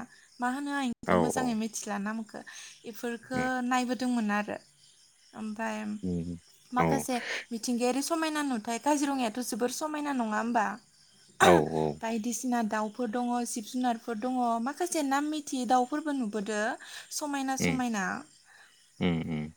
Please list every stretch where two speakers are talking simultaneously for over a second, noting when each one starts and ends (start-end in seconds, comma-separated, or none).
none